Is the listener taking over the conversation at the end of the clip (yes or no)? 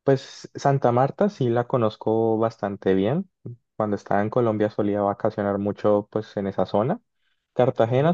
no